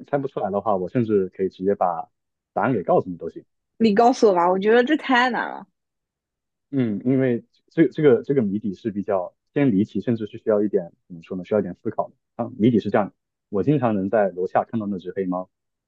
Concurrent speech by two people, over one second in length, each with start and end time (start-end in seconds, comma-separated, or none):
none